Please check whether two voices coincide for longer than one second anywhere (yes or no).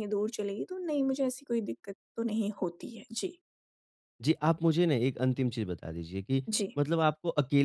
no